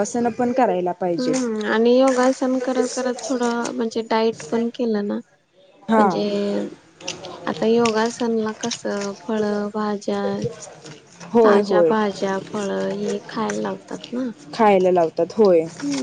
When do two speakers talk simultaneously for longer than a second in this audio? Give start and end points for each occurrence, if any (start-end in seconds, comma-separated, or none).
none